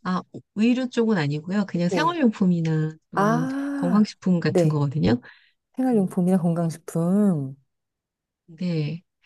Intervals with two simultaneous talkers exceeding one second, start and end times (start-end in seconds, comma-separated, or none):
3.1-4.8